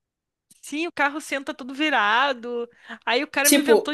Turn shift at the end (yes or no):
no